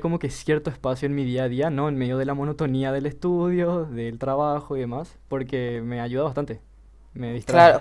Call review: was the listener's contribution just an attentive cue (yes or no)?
no